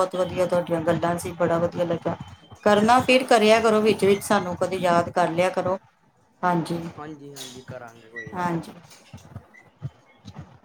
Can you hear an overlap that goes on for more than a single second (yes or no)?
no